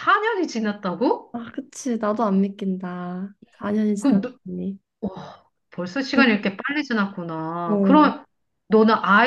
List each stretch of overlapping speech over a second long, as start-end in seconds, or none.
none